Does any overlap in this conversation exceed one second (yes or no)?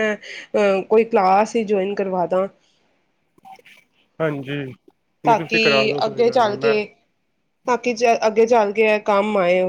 yes